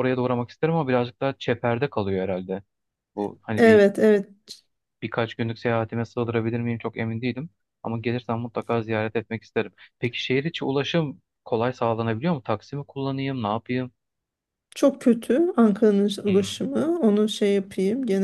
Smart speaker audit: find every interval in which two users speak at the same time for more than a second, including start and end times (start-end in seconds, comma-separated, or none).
none